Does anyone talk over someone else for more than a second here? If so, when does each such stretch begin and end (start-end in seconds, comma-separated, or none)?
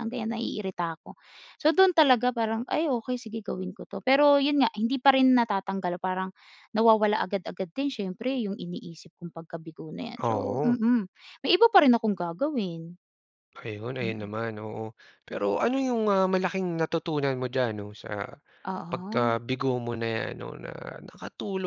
none